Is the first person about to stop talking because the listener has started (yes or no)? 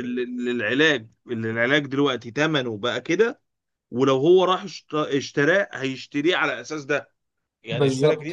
no